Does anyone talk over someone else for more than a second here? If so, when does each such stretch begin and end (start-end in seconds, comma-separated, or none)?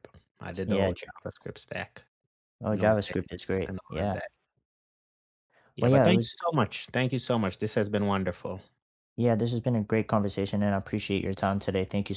2.7-4.2